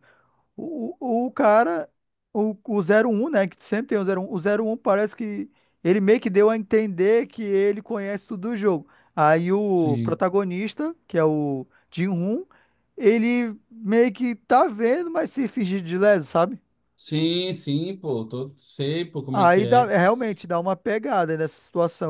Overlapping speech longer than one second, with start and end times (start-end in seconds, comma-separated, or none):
none